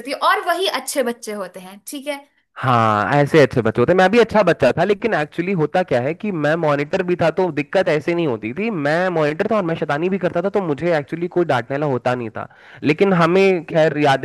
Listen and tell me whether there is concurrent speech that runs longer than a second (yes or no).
no